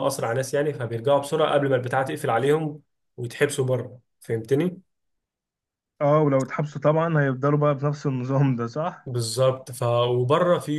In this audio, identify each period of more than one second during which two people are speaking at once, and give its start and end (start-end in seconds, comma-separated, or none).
none